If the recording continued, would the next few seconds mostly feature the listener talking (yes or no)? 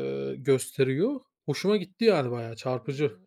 yes